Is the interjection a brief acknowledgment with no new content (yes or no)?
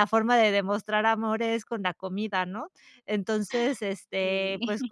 yes